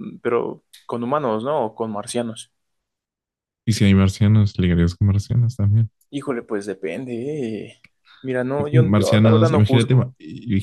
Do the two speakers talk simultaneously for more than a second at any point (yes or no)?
yes